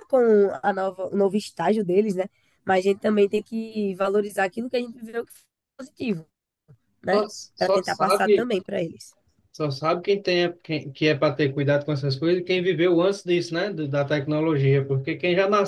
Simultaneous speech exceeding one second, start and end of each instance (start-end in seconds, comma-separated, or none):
7.1-8.5